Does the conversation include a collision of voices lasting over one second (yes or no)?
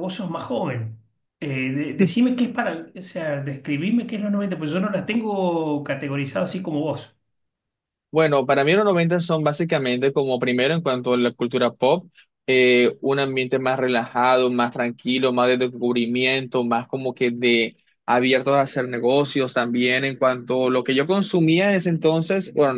no